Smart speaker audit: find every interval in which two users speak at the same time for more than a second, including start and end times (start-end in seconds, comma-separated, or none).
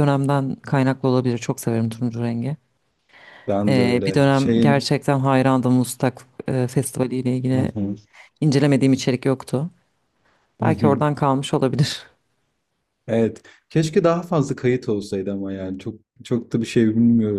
3.7-4.9